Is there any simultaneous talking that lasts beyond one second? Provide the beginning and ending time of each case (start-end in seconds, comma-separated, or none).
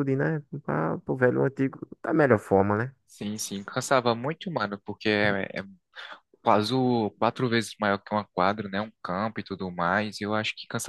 none